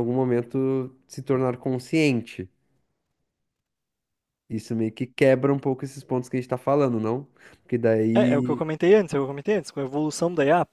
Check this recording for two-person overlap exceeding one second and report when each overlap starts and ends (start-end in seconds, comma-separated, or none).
none